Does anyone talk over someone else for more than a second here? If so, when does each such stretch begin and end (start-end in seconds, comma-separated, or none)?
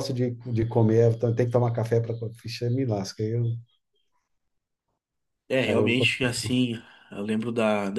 none